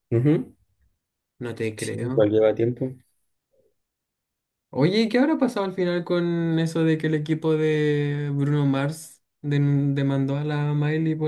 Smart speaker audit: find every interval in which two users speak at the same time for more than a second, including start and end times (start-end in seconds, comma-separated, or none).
none